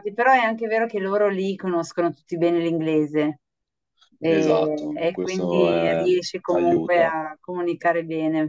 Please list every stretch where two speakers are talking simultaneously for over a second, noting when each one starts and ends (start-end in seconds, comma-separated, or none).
4.3-7.1